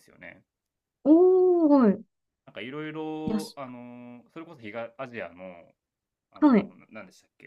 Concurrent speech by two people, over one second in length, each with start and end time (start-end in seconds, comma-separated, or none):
none